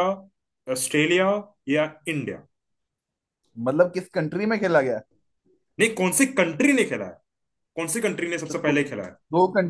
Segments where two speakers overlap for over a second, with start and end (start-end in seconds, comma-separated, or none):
none